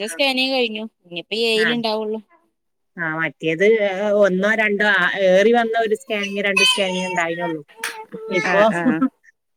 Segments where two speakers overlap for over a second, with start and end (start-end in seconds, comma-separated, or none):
none